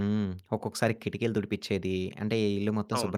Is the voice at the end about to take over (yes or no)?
no